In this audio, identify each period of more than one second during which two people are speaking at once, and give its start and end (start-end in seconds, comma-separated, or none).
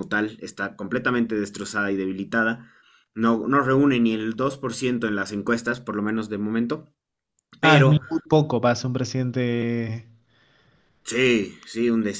none